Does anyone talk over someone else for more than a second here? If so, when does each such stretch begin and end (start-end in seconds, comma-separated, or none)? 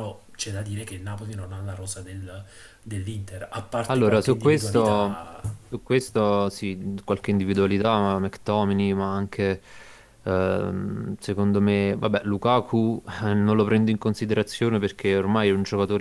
3.9-5.2